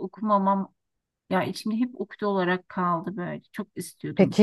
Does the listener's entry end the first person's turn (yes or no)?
yes